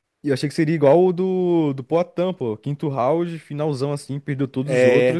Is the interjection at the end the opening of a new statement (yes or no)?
no